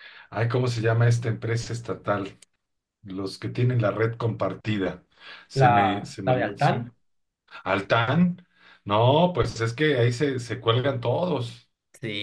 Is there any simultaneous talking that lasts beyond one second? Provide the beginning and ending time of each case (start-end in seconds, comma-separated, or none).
5.5-6.7